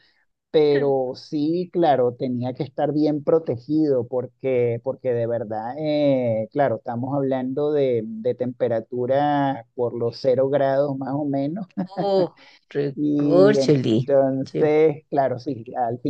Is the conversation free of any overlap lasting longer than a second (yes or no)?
no